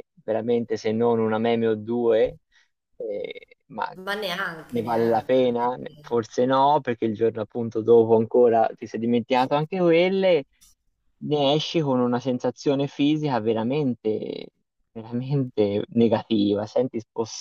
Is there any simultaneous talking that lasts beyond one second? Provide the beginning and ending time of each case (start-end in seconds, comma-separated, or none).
4.7-6.2